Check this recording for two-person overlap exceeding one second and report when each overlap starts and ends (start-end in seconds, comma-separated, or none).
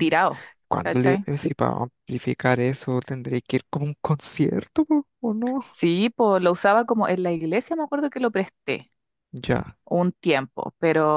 none